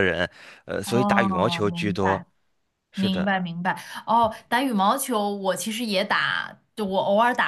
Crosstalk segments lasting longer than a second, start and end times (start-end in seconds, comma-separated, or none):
0.8-2.2